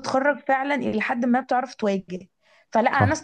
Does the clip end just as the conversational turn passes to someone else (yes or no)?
no